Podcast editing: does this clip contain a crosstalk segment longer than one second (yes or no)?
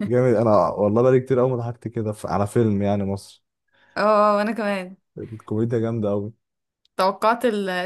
no